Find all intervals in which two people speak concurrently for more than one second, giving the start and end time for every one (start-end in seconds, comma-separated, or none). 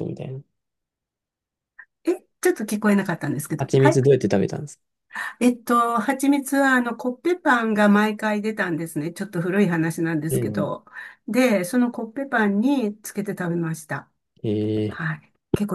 none